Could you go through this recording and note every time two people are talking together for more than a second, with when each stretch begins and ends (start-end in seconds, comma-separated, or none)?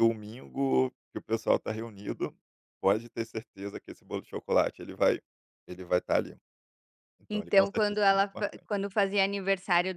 7.3-8.7